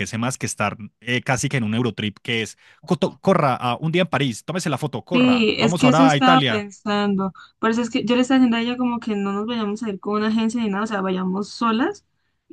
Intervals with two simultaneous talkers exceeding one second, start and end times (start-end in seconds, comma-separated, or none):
5.1-6.7